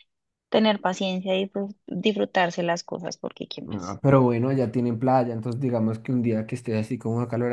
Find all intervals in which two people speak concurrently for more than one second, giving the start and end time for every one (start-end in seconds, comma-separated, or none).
none